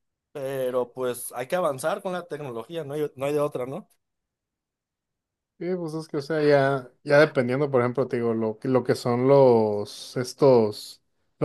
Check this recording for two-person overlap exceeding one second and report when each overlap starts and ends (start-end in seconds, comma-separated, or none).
none